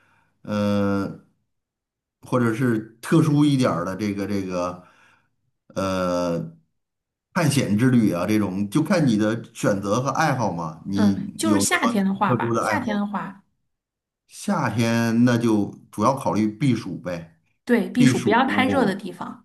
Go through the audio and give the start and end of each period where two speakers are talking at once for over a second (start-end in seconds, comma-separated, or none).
10.9-12.9